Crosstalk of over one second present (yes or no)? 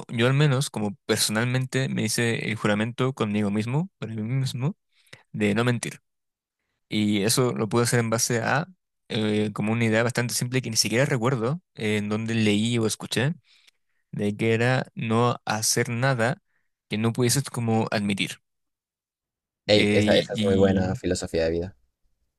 yes